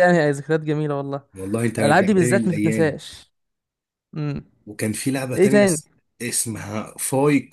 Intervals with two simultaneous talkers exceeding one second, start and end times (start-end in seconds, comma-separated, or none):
1.8-3.0